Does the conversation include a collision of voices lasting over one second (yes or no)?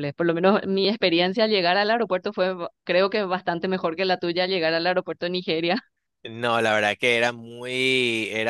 no